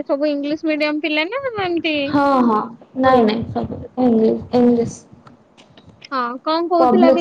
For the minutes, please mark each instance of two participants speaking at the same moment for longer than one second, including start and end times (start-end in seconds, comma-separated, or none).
none